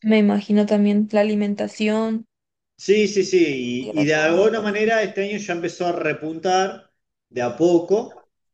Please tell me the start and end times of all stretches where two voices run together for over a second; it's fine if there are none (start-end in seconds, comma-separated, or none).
3.5-4.9